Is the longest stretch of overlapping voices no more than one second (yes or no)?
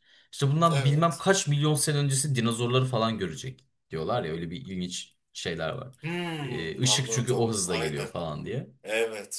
no